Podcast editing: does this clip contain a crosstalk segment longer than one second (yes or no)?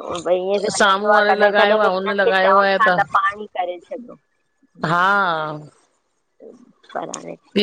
yes